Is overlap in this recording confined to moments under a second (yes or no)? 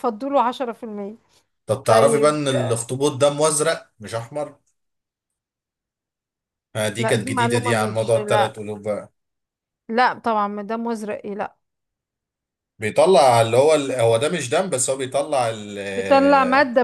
no